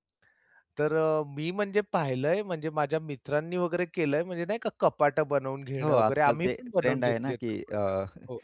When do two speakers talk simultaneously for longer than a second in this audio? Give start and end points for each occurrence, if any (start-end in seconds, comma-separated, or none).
5.8-7.9